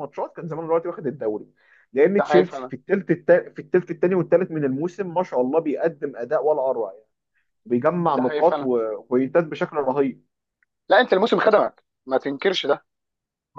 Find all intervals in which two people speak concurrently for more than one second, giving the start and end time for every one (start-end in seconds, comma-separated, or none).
none